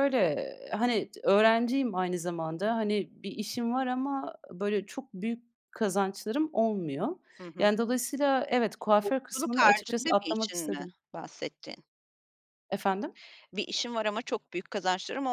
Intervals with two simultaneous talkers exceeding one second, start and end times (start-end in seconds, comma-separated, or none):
9.0-10.9